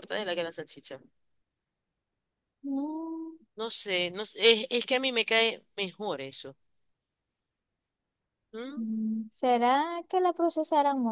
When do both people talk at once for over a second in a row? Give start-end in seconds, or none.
none